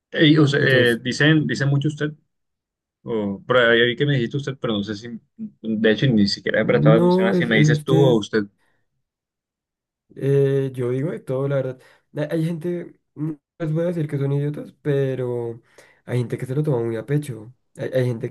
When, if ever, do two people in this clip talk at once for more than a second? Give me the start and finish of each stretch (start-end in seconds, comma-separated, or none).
6.6-8.2